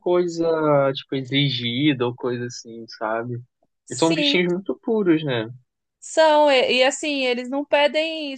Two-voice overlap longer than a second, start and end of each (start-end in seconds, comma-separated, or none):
none